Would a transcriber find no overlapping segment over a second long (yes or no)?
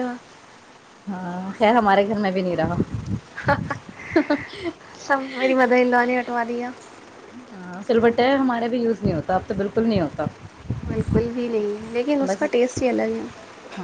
yes